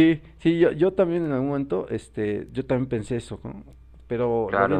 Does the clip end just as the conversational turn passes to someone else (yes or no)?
yes